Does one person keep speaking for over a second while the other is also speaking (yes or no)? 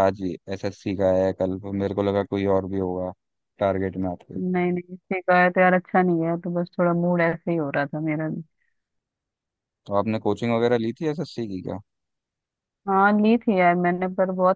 no